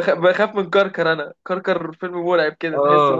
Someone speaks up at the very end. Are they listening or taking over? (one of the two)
taking over